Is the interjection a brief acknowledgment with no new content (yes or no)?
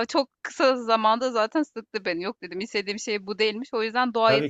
yes